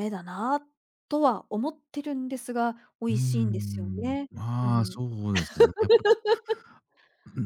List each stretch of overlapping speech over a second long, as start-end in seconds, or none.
3.1-5.0